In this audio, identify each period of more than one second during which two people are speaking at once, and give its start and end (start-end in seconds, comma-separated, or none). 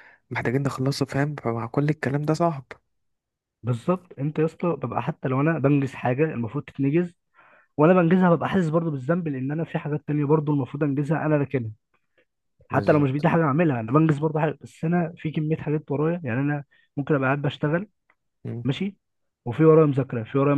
none